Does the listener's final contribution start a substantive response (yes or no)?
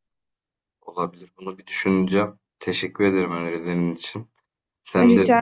no